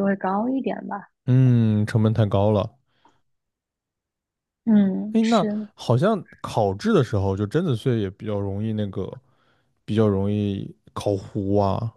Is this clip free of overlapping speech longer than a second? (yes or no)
yes